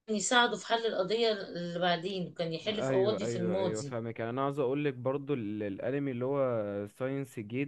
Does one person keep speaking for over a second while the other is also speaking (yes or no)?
yes